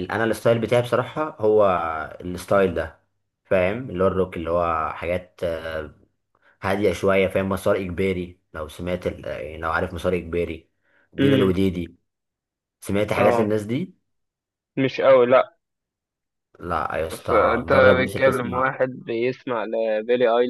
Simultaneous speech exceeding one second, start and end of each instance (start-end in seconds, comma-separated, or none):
17.1-18.8